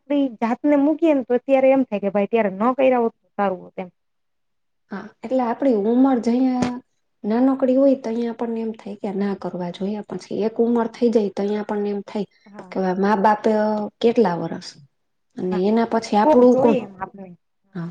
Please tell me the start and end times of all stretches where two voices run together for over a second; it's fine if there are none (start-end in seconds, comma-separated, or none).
none